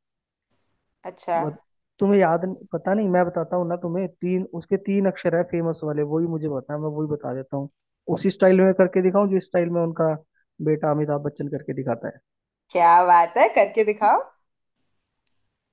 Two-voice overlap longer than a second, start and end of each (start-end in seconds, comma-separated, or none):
none